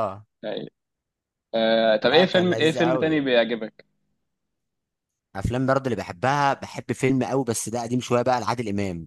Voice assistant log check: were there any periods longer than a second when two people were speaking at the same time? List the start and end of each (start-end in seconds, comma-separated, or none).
2.0-3.3